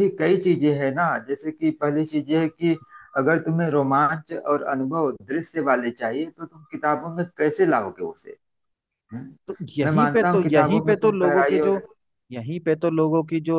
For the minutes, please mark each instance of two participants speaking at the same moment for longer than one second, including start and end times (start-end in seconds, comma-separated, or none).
9.8-11.8